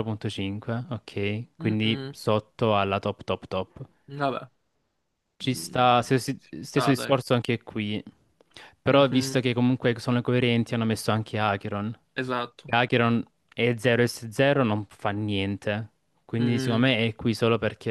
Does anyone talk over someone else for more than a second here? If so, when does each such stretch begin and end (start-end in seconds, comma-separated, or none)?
5.4-7.1